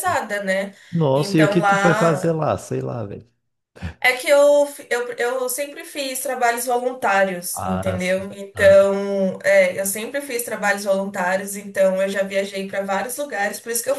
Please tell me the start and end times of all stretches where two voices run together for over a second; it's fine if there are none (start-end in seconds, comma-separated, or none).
1.1-2.4, 7.5-8.8